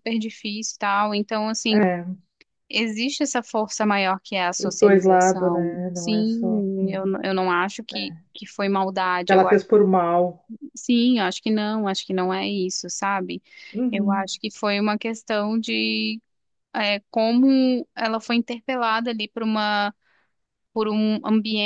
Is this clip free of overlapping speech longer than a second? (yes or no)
no